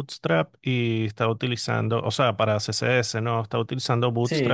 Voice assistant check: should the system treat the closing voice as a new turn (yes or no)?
no